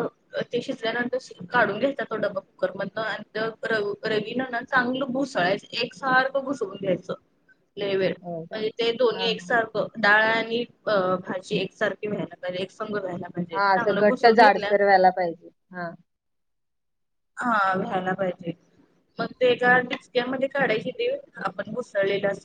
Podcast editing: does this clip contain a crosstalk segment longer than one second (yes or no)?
no